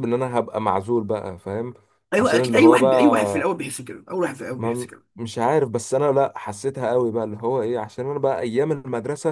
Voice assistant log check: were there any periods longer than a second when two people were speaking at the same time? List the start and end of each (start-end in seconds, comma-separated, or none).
2.2-3.5